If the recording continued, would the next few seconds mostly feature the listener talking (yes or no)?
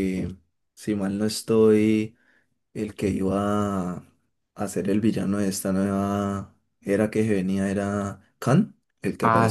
yes